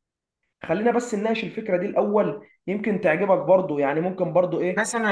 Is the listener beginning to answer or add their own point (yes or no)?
yes